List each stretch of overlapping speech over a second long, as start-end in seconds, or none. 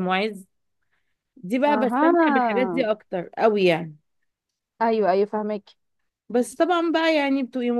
1.7-2.9